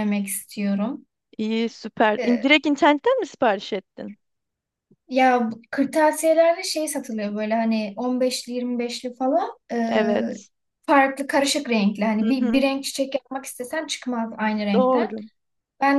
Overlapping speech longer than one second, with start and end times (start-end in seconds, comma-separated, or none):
none